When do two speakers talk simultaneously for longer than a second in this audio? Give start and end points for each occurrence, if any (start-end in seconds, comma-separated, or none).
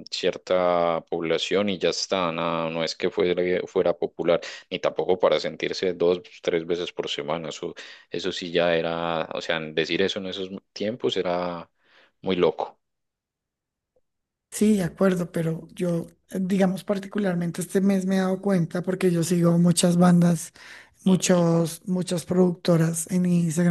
none